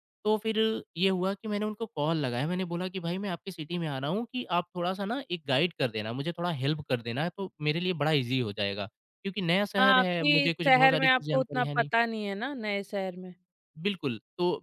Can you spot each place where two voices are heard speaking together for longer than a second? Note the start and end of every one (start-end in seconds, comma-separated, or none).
9.8-11.9